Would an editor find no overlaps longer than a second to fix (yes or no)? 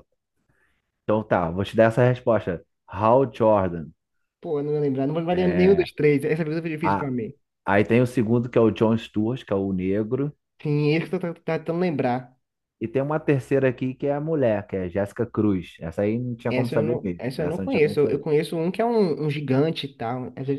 no